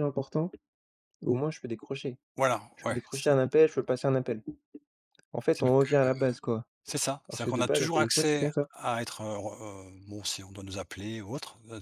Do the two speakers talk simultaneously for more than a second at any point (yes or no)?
yes